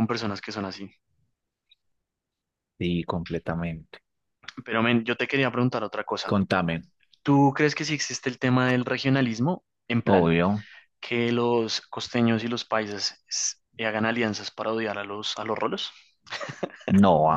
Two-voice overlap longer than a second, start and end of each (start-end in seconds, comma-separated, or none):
none